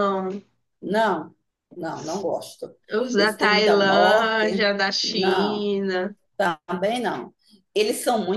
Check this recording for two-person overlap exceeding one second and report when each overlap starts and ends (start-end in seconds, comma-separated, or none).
3.2-5.7